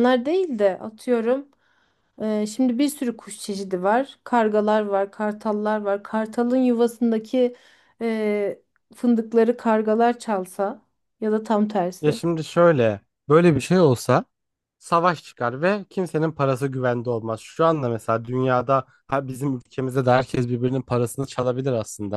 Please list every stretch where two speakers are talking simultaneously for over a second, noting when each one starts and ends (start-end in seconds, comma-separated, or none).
none